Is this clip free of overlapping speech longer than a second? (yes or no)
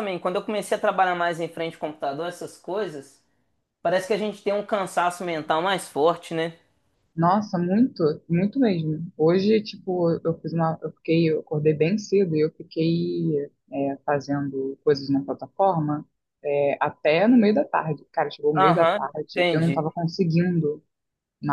no